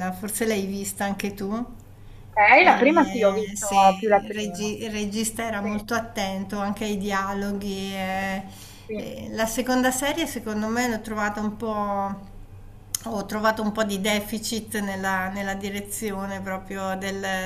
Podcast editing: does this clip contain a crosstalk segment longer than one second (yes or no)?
yes